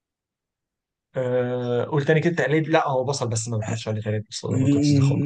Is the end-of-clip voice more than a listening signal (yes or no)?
yes